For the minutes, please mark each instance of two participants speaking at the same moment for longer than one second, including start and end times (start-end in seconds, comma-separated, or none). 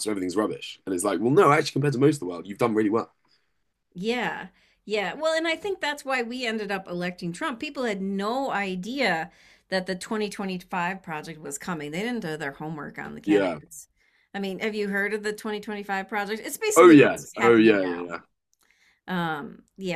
16.8-18.2